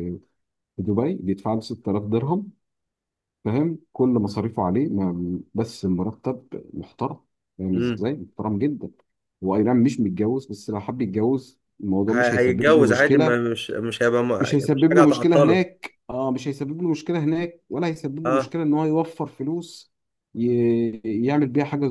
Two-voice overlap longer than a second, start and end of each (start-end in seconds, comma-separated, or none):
12.1-13.4, 14.4-15.7